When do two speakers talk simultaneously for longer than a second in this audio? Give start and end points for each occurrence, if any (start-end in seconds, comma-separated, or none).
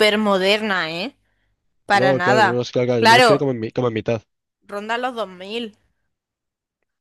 1.9-3.5